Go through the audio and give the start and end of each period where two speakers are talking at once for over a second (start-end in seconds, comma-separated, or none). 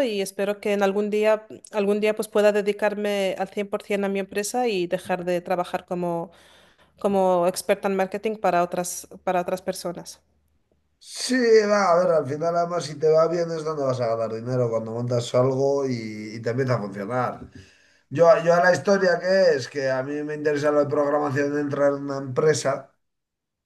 none